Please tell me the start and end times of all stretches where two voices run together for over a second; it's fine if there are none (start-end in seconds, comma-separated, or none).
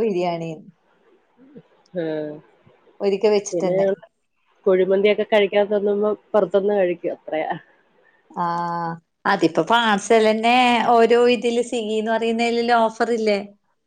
none